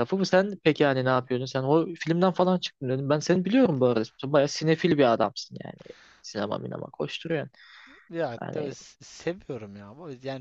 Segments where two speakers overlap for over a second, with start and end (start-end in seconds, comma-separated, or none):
none